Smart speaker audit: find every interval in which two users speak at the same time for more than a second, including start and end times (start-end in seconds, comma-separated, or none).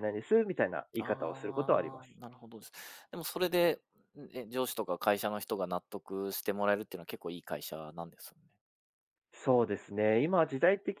1.0-2.2